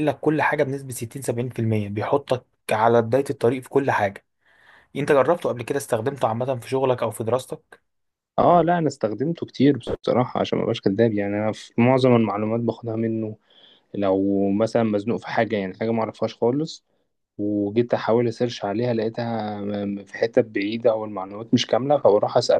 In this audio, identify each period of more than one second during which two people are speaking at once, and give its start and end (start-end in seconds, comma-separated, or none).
none